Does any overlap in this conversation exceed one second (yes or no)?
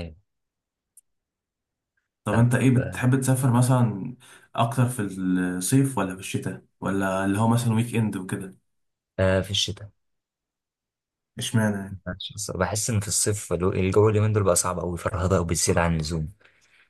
no